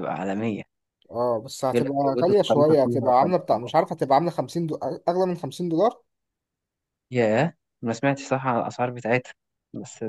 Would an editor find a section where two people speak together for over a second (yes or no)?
yes